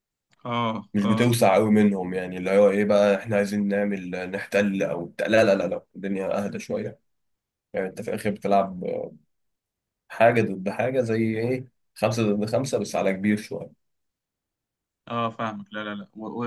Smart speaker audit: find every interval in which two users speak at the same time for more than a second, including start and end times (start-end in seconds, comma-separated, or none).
none